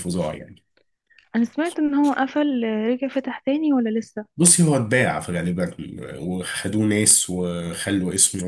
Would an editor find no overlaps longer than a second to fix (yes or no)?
yes